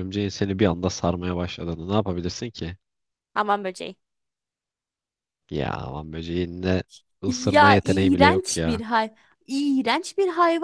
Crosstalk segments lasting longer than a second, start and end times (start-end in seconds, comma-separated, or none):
7.3-8.8